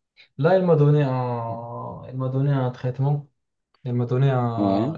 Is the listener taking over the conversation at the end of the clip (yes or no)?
no